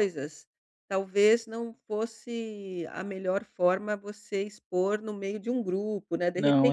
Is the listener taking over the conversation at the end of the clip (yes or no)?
yes